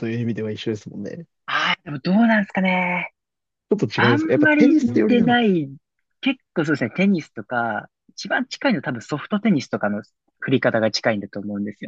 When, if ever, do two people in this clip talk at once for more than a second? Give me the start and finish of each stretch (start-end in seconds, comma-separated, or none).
4.0-5.5